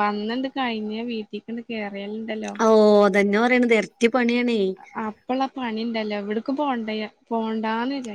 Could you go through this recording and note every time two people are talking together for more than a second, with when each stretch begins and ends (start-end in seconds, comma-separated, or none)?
none